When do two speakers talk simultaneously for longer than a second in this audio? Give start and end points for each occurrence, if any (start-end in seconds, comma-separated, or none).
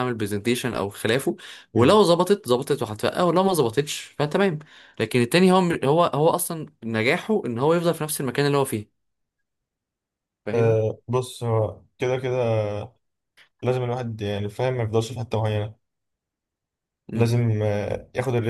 none